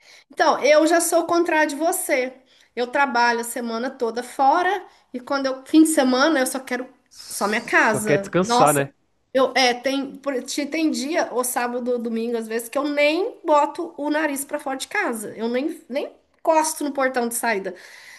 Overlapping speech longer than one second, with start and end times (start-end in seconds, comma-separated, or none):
7.3-8.9